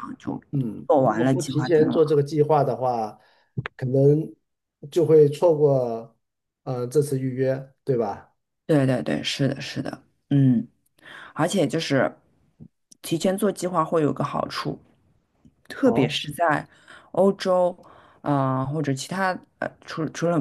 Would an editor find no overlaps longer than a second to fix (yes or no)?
no